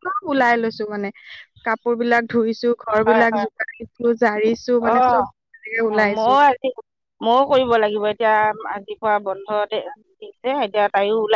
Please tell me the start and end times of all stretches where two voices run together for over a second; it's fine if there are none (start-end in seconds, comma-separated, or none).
none